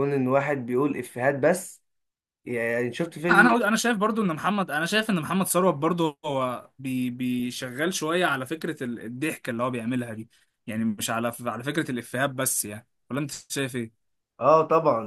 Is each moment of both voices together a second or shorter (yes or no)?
yes